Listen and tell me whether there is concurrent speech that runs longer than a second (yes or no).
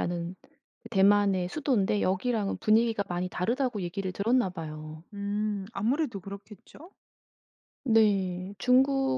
no